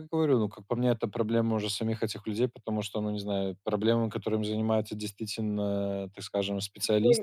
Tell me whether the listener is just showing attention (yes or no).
no